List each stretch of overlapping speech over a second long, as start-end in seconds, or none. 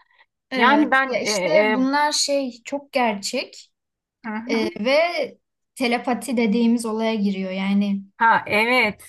0.5-1.9